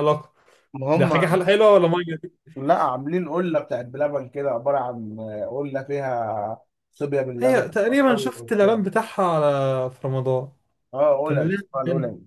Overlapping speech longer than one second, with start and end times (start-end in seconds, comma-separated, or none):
7.4-8.8